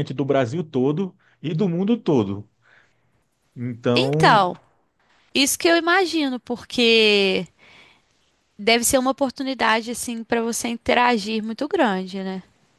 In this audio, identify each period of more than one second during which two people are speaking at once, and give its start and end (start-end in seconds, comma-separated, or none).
none